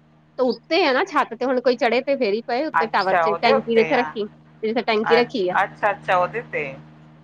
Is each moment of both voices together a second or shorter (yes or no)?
no